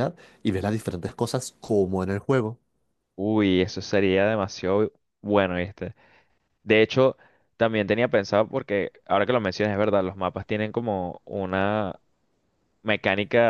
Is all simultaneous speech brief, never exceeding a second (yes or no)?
yes